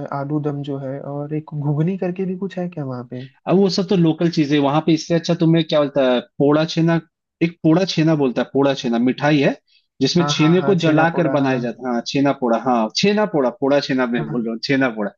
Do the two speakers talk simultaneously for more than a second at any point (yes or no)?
yes